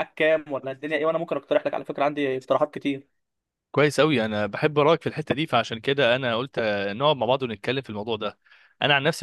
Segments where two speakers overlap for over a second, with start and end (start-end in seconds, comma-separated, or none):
none